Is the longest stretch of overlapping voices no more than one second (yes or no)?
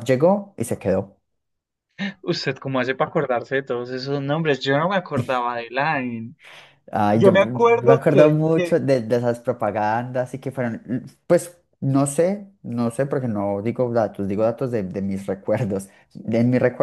no